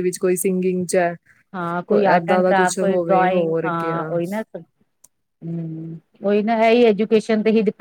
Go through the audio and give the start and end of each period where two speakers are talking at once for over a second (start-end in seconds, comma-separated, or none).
1.9-4.0